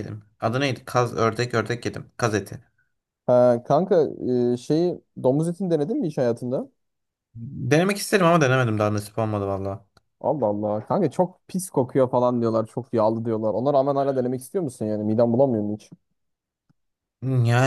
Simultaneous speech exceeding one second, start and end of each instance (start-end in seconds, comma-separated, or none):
none